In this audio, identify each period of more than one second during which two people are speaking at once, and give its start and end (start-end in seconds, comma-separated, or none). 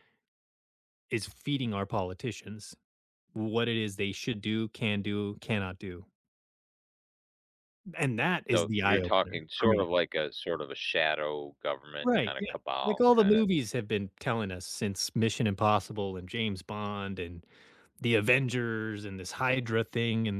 8.5-9.9, 12.0-13.5